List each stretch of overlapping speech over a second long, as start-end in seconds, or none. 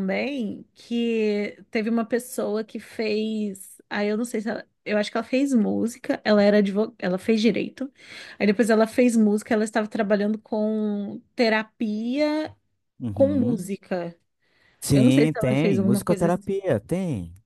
14.9-16.4